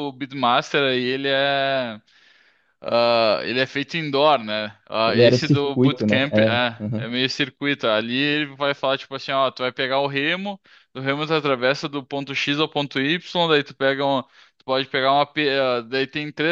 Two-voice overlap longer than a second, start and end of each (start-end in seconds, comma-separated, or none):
5.0-7.0